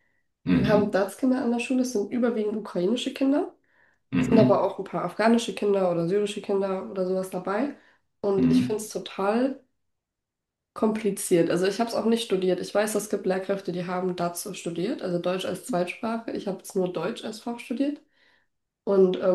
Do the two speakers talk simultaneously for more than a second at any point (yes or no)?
no